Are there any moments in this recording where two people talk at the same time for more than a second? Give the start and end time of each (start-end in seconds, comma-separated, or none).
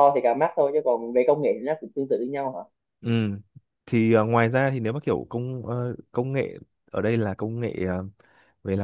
none